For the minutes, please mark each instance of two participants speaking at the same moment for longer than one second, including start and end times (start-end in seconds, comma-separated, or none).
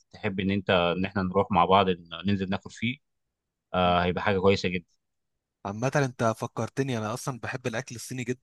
none